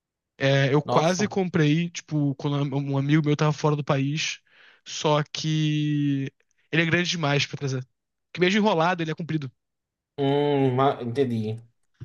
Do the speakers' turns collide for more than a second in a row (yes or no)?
no